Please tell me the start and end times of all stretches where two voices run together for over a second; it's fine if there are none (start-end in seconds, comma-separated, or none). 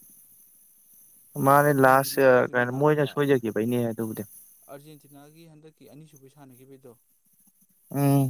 1.4-3.2